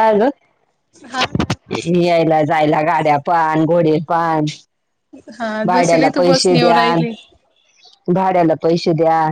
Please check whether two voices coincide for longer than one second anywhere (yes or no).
yes